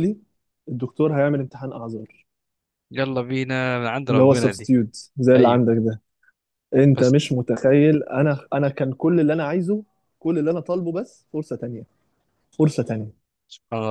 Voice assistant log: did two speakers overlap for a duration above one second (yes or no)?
no